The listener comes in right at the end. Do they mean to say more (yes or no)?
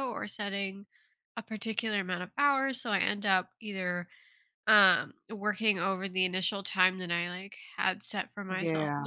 no